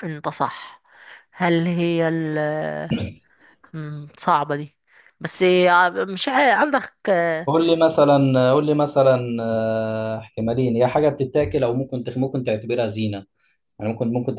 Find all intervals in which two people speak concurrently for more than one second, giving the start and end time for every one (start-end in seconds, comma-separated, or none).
none